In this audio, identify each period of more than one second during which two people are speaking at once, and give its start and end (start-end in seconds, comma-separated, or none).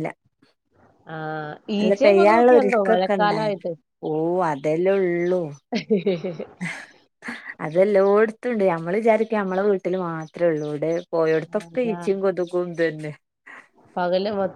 1.8-3.5